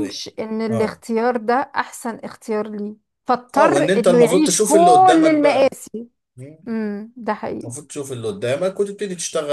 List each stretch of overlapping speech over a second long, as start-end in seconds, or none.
3.6-5.8